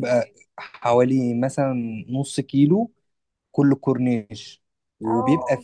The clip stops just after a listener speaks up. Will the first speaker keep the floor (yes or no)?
yes